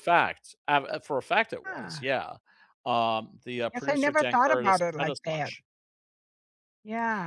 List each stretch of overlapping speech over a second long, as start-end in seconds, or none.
3.7-5.5